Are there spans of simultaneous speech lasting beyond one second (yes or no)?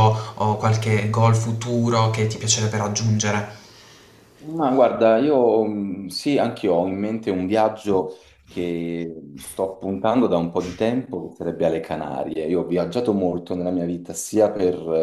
no